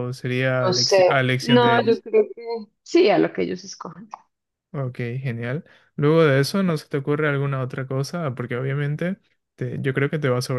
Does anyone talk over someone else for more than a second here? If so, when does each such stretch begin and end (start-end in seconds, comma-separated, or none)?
0.7-2.0